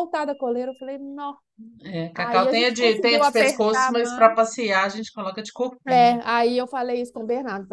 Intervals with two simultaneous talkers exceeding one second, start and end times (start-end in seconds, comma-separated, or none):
2.1-4.3